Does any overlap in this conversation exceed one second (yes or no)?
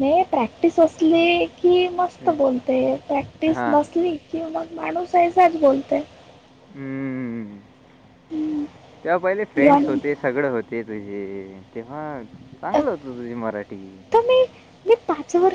no